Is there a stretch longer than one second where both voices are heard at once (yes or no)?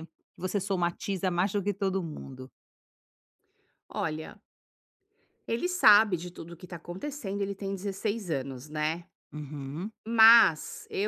no